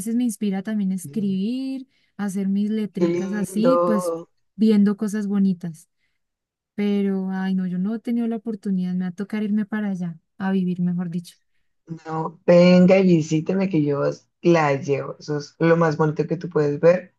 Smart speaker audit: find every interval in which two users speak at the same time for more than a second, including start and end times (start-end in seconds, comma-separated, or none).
2.9-4.1